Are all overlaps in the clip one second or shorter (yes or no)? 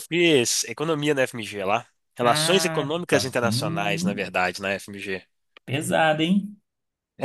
no